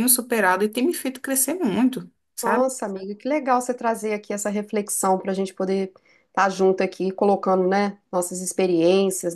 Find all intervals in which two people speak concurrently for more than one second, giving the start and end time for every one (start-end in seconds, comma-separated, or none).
none